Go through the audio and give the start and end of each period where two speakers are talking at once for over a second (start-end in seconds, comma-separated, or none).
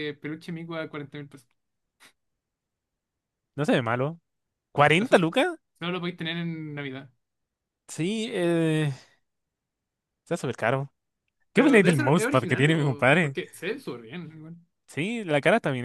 11.5-13.4